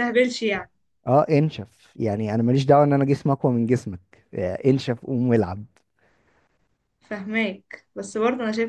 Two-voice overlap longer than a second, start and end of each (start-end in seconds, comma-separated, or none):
none